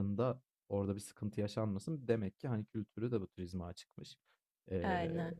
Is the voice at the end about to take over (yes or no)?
no